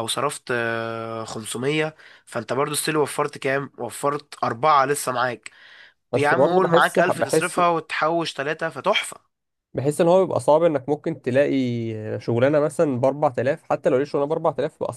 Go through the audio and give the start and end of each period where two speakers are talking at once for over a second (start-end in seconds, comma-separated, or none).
6.1-7.6